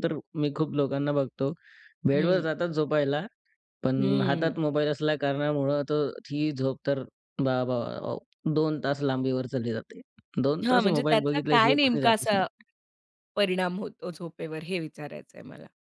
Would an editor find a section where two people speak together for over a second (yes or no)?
yes